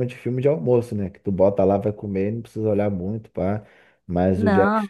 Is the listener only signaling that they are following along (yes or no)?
yes